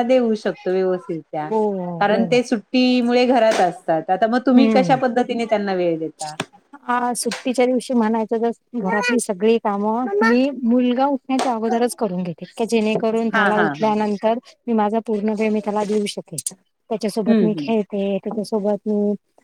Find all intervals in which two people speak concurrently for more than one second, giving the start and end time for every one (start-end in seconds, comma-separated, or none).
none